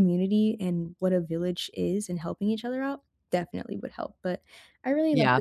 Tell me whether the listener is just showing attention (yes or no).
no